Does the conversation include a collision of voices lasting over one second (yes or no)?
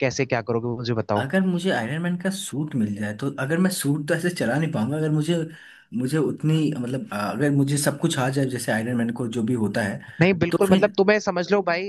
no